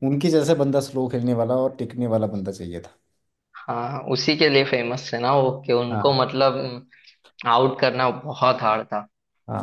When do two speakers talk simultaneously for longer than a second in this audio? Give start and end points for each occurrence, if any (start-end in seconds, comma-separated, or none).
none